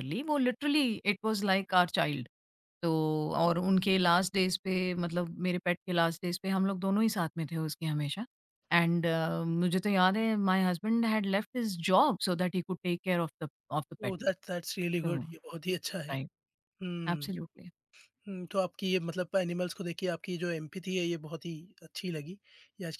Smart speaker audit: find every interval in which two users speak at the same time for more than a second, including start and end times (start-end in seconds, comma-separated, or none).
none